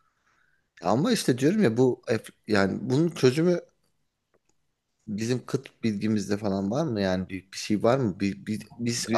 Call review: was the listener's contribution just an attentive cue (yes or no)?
no